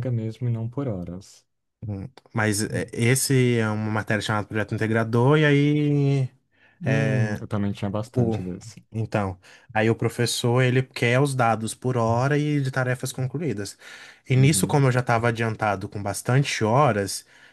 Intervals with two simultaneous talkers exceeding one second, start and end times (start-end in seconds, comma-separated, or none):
none